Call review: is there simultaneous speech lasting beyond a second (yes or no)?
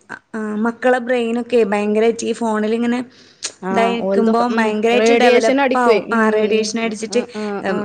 yes